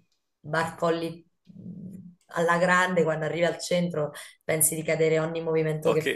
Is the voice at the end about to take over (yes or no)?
yes